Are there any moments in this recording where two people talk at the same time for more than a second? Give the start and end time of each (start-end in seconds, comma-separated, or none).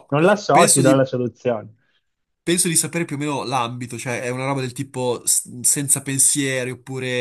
none